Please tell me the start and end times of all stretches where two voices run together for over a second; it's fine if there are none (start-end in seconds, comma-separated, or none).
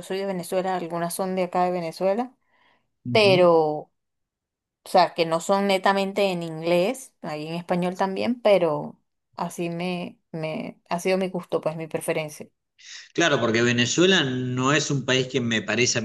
none